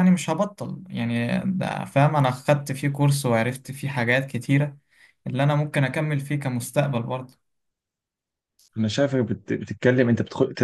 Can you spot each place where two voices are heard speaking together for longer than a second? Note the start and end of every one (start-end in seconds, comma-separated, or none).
none